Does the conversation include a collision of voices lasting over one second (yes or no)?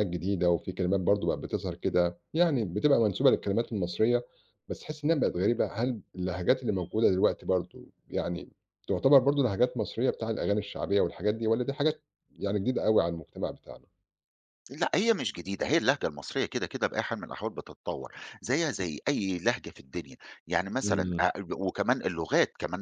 no